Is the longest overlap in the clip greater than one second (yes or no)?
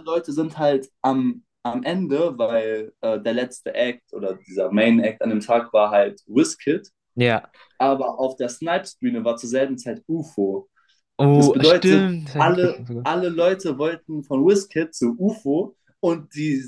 yes